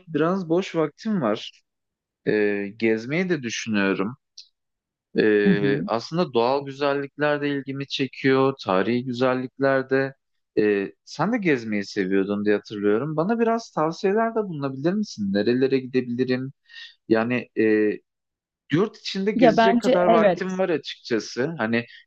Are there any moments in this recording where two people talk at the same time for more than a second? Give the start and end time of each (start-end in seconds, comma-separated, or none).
19.4-20.6